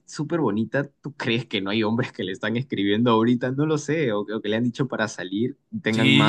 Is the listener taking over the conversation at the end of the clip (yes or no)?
yes